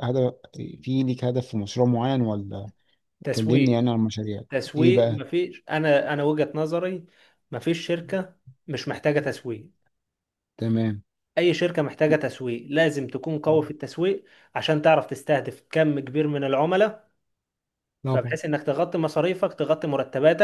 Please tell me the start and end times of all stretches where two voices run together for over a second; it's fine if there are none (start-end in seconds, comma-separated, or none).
none